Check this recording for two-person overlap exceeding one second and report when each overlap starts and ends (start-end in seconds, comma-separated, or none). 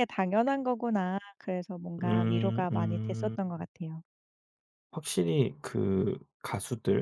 2.0-3.4